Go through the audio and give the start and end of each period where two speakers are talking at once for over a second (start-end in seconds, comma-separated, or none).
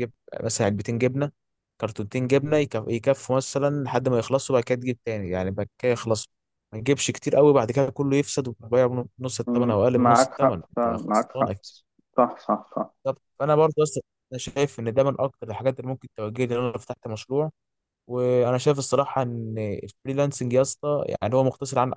9.5-11.6